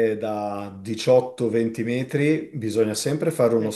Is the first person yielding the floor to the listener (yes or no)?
no